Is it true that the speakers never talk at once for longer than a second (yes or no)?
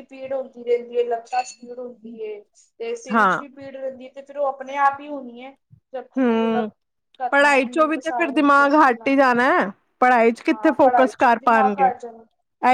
no